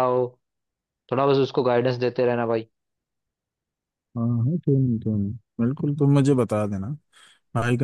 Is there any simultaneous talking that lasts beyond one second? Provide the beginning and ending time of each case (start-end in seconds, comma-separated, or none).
none